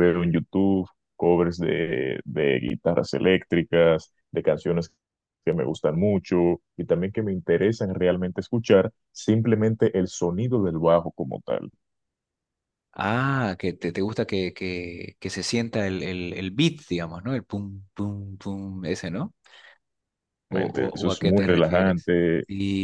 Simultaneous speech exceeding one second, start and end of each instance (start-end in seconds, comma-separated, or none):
20.5-22.1